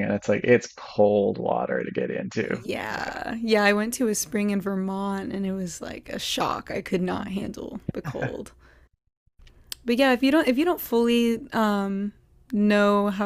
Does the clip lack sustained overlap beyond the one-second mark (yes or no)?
yes